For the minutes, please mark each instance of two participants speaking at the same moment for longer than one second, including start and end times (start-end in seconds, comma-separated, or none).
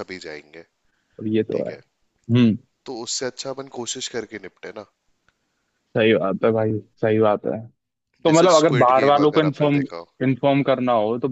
8.3-9.8